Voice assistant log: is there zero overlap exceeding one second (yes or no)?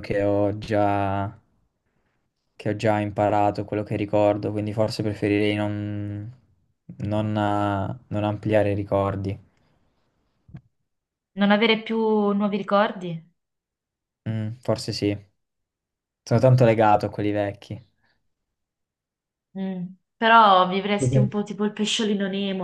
yes